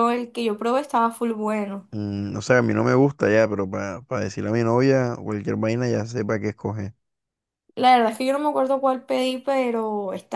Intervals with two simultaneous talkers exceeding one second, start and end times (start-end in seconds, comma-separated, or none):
none